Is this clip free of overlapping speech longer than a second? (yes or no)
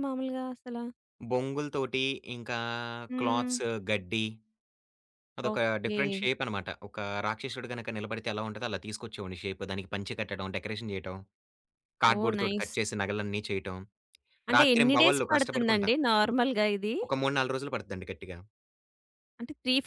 no